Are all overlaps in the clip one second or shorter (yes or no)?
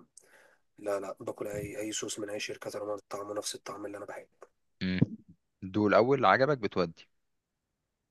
yes